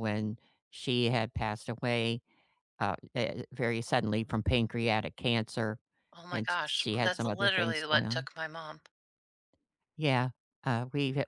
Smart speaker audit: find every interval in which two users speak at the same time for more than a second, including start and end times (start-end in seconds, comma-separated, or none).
6.3-8.3